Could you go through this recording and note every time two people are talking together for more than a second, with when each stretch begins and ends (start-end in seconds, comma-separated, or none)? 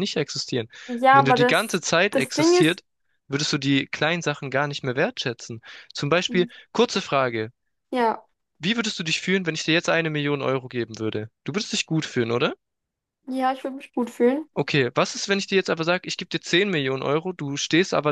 1.1-2.8